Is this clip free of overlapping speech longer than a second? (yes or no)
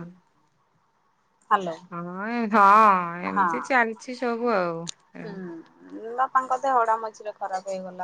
yes